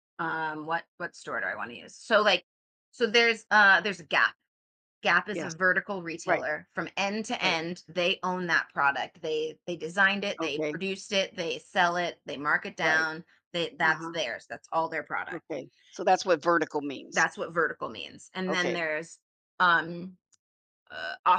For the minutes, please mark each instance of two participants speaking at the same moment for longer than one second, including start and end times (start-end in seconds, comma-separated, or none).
none